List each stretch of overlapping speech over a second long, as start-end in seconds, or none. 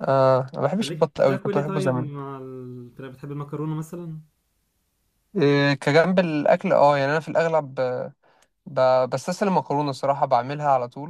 0.8-2.1